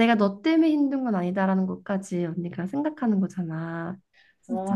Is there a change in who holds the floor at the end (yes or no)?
yes